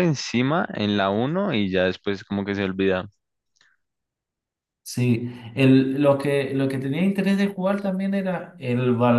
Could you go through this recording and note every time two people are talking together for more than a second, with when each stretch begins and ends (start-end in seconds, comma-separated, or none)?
none